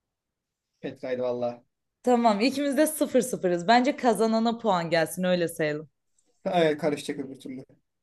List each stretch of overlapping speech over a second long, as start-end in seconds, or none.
none